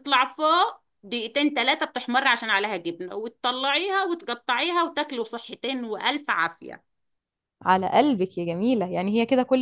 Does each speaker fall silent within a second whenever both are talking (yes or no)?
yes